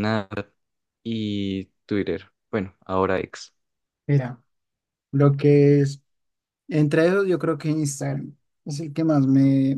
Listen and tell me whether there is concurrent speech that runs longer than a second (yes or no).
no